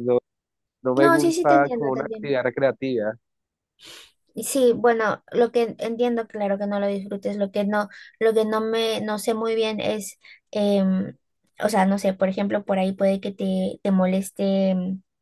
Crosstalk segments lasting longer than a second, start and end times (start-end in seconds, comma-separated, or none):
1.0-2.4